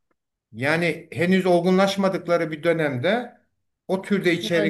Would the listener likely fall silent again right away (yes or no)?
yes